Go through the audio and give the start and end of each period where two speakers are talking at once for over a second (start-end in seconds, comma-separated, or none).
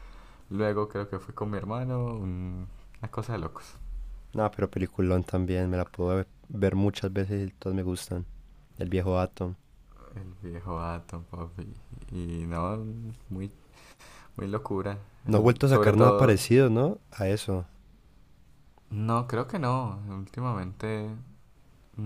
15.3-16.5